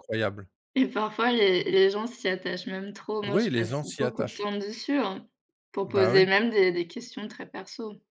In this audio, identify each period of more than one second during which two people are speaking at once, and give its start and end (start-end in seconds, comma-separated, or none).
3.3-4.5